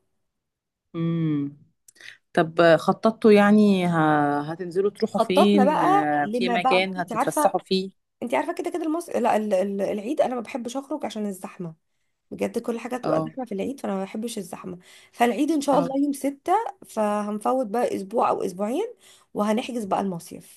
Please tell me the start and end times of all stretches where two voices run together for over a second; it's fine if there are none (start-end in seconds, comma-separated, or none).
5.1-7.6